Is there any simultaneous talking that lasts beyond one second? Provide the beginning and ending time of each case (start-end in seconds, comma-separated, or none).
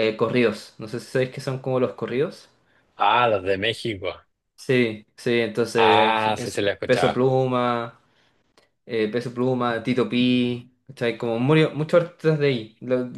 5.8-7.2